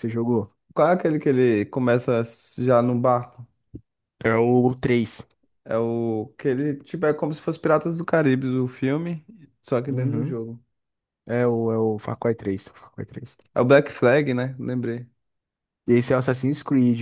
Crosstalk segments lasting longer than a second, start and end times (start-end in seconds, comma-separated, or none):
none